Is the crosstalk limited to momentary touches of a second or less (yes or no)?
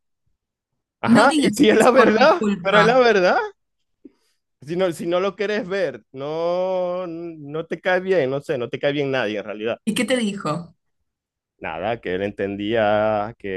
no